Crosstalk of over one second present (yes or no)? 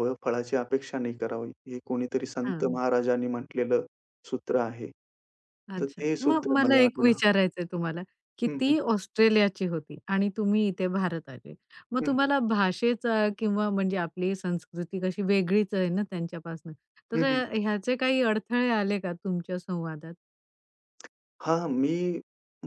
yes